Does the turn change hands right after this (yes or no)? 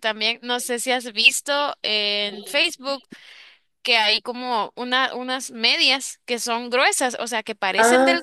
no